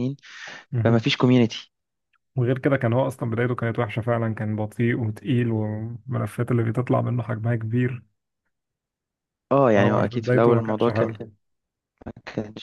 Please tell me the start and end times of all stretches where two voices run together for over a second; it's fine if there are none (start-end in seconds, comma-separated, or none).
9.7-11.2